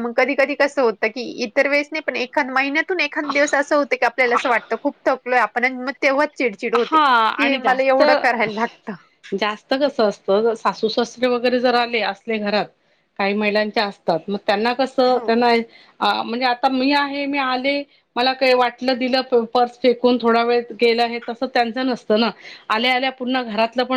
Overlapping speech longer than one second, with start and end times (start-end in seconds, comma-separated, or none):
none